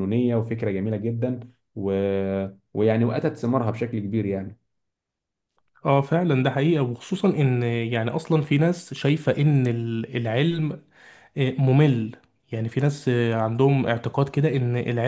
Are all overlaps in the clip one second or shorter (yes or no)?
yes